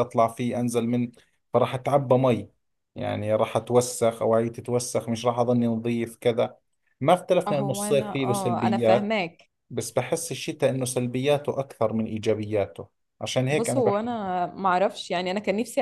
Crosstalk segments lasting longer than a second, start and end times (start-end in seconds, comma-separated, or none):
7.5-9.1